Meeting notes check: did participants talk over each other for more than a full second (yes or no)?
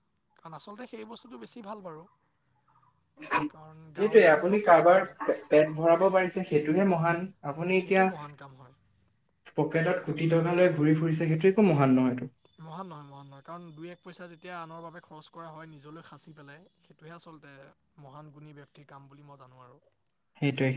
yes